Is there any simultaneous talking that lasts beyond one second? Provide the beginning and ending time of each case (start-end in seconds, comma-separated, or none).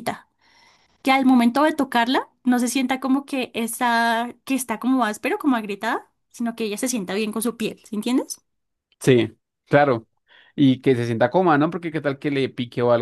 none